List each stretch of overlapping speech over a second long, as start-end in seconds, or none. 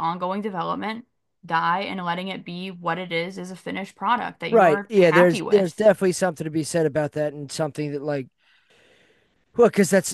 4.5-5.8